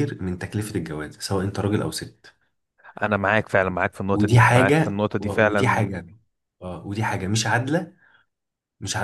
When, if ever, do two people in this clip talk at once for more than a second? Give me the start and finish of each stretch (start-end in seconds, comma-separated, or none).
4.1-5.9